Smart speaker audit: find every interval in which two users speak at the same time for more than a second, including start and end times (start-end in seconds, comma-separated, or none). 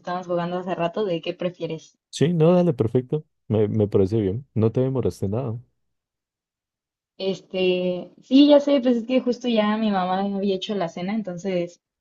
none